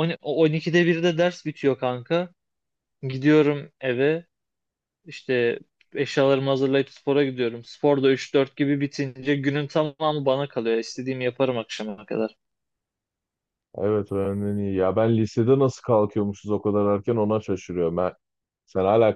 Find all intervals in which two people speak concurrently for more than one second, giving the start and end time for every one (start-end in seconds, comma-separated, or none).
none